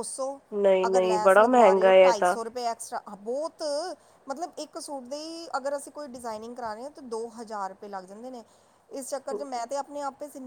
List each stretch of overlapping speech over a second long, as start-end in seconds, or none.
0.9-2.4